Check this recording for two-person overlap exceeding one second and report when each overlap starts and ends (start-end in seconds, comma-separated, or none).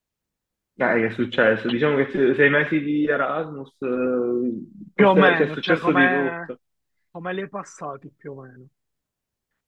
4.9-6.6